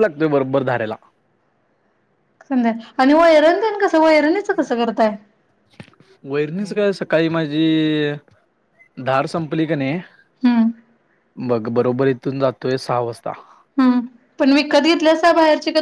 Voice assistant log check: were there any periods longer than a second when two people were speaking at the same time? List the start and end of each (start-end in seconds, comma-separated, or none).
none